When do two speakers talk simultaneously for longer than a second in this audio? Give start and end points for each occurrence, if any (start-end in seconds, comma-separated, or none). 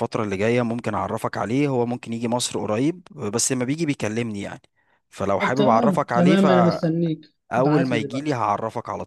5.4-7.1